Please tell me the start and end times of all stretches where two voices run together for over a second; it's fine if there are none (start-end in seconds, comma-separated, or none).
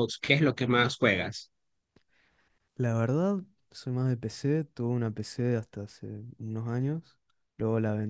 none